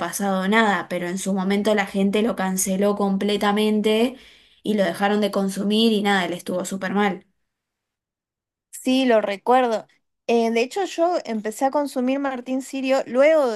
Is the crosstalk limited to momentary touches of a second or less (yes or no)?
yes